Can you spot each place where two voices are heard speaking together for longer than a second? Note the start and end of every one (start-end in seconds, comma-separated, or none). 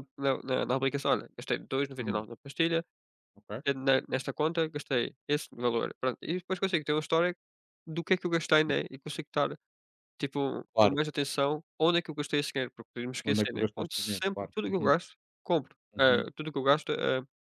13.3-14.9